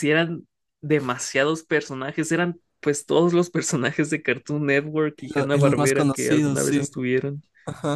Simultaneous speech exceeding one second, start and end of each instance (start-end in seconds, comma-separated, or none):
5.2-6.9